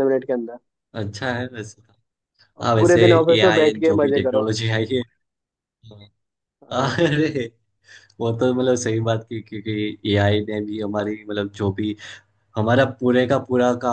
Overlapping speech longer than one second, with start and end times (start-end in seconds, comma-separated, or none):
2.6-4.5